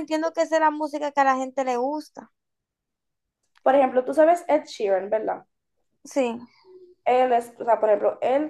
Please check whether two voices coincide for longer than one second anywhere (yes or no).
no